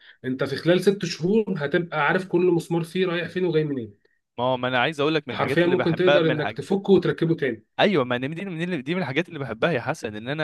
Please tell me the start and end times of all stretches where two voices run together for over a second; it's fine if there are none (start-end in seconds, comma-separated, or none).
5.3-6.6